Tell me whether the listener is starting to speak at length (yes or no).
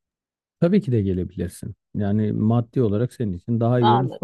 no